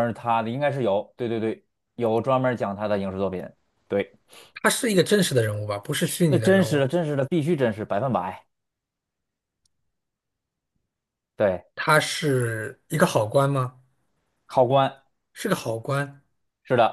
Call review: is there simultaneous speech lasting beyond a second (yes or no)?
no